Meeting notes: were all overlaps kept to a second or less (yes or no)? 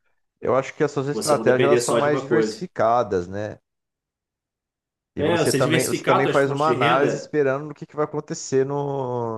no